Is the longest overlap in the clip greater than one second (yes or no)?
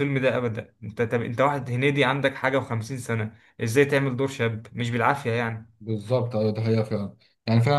no